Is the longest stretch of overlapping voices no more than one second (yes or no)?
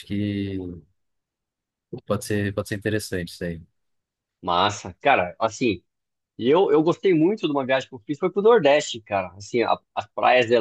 yes